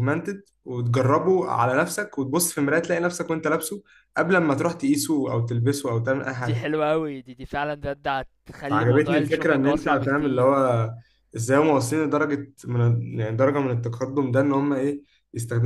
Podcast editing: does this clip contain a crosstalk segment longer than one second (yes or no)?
yes